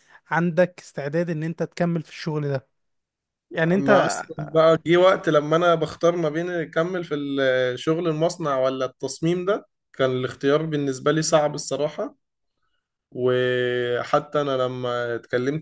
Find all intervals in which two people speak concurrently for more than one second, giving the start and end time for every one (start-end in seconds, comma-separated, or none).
none